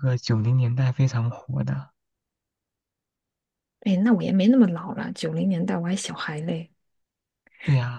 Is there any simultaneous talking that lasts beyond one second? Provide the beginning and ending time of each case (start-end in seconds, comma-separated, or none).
none